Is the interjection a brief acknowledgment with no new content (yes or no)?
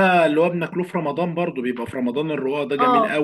no